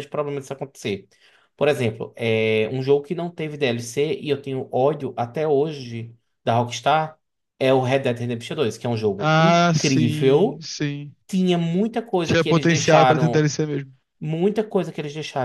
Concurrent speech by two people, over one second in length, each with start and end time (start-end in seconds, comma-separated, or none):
9.2-10.6, 12.2-13.5